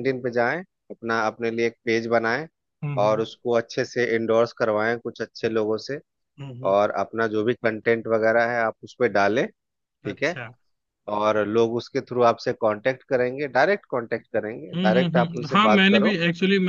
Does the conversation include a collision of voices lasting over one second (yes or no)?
yes